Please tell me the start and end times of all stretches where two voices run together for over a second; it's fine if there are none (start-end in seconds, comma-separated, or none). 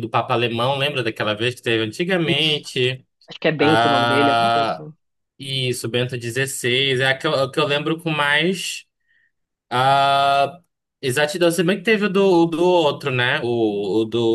3.6-4.9